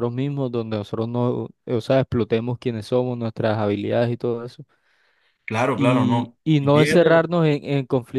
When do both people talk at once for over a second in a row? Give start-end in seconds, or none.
5.8-7.1